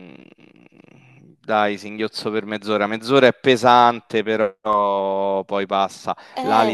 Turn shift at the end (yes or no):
no